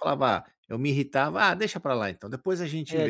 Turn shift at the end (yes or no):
yes